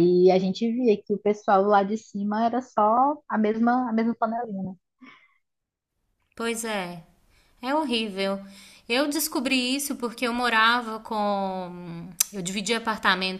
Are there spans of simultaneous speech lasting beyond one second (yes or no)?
no